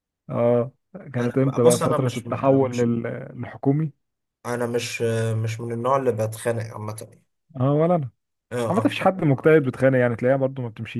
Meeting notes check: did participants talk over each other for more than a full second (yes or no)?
yes